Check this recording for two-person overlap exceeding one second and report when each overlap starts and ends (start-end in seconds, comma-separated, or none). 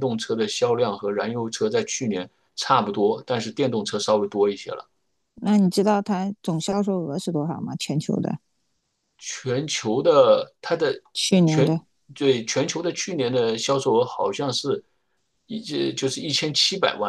none